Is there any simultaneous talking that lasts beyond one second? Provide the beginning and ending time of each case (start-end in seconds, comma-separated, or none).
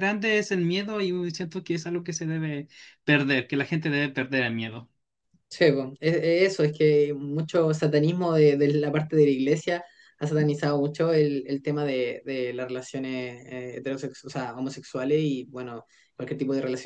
none